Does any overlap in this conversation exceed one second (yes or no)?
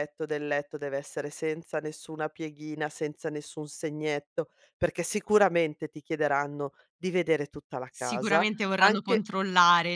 yes